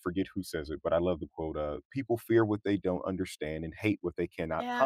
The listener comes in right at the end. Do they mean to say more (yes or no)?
yes